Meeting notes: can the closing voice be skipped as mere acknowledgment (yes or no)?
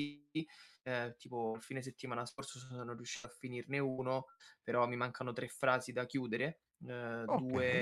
yes